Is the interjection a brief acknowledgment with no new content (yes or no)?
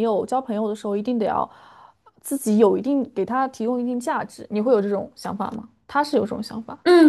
no